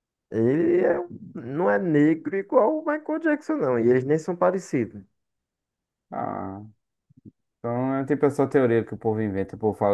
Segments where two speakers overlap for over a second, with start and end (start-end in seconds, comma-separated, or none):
none